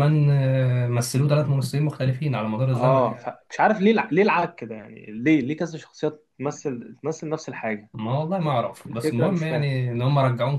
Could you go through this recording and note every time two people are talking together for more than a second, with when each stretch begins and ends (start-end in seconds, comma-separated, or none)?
8.4-9.7